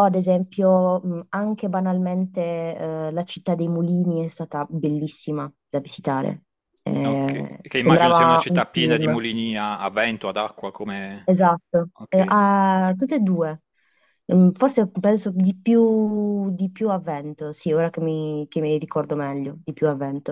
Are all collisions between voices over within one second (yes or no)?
no